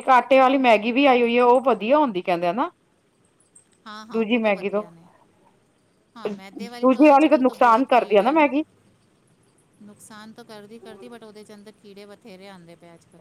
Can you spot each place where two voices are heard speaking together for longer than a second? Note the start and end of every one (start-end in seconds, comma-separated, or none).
6.6-8.5